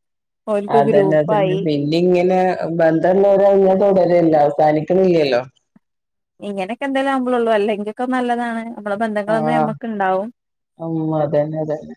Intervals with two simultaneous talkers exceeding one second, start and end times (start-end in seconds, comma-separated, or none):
none